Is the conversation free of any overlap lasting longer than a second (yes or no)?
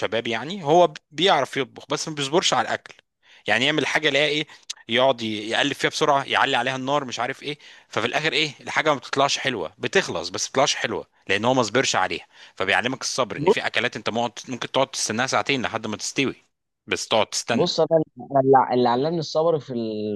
yes